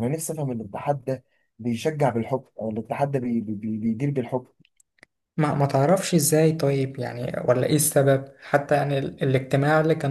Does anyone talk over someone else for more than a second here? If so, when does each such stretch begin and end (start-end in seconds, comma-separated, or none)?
none